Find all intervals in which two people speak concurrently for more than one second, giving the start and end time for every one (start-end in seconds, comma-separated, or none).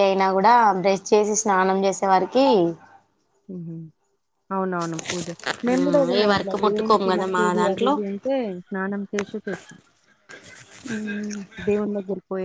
5.7-7.9